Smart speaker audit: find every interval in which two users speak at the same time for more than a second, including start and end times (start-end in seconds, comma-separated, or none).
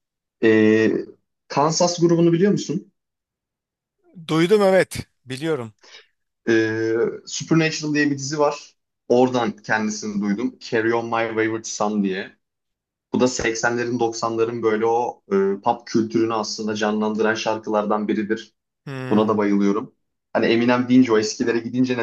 none